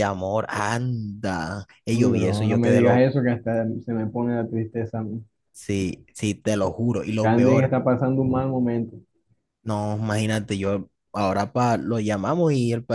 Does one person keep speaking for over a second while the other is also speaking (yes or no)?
yes